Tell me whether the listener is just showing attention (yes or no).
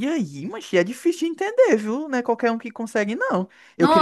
yes